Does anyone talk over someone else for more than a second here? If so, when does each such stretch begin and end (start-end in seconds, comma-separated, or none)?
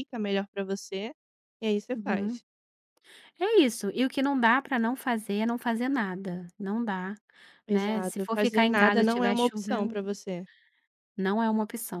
7.7-10.0